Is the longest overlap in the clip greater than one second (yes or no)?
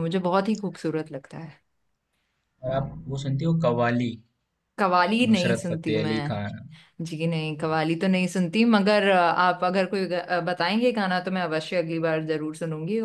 yes